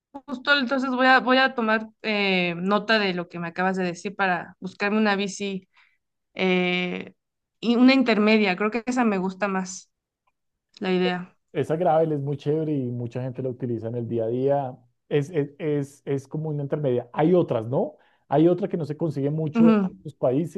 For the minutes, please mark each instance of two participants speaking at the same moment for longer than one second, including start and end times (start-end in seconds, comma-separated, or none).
none